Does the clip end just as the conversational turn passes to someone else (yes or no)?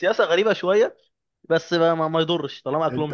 yes